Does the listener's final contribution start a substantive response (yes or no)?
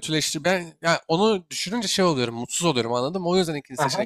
yes